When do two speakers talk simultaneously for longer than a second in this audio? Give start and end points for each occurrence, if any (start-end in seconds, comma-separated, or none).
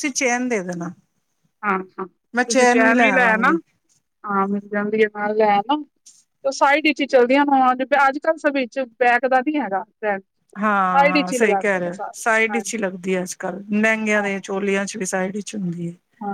10.9-12.9